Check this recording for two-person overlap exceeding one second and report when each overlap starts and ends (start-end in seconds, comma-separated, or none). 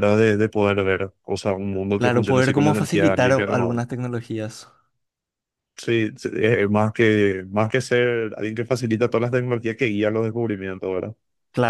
1.9-3.8